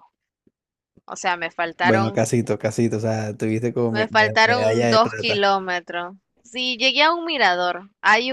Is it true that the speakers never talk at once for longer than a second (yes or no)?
no